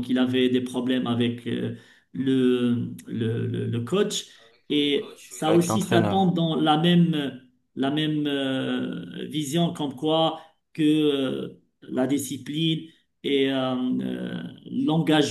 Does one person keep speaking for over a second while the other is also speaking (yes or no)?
yes